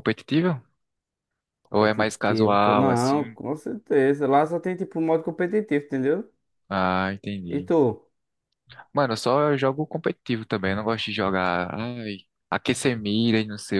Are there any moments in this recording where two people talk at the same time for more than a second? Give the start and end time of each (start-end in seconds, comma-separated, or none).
1.7-3.2